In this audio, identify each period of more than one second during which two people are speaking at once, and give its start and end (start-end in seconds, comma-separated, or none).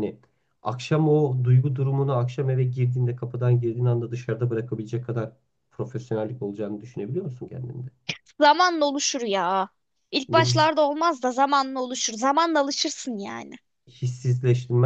none